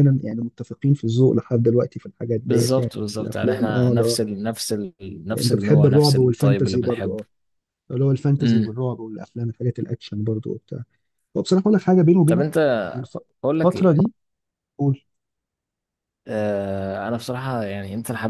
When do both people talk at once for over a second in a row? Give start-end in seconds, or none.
2.4-4.2, 5.4-7.2